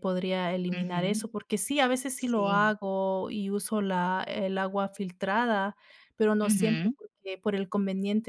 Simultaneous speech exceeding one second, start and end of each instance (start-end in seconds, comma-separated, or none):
none